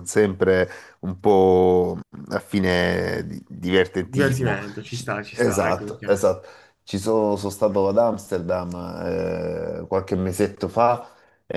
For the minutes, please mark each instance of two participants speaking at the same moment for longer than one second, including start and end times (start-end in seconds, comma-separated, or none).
4.0-6.1